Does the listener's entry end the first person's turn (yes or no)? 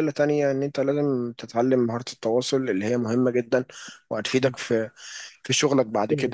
yes